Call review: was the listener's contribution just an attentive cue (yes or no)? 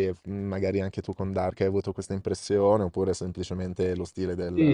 no